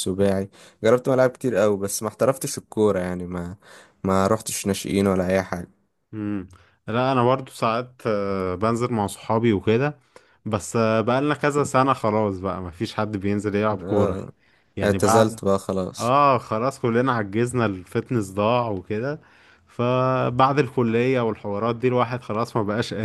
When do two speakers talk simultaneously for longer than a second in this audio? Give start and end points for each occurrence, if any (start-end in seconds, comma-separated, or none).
none